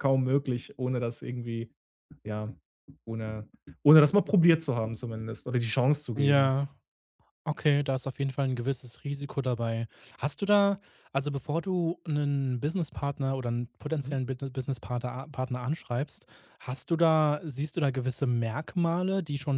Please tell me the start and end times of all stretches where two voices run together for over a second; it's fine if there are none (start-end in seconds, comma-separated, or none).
none